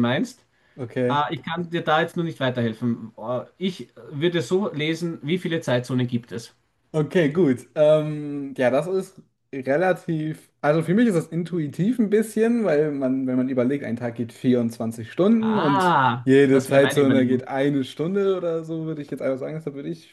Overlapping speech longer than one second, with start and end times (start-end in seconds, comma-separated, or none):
15.4-17.5